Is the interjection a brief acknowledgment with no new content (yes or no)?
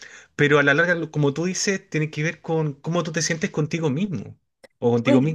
no